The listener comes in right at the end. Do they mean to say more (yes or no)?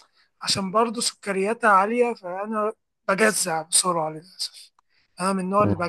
no